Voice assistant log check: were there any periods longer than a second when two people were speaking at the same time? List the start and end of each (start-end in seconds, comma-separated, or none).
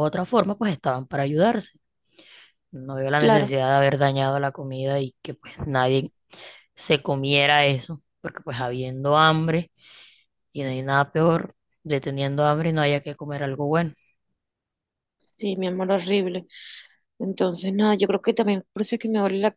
none